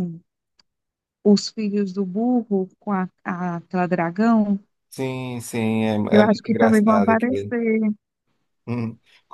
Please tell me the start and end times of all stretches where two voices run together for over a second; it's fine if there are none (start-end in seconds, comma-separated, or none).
6.1-7.5